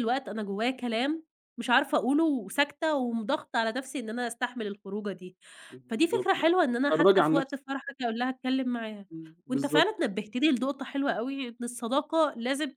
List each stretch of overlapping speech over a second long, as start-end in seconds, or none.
5.9-7.6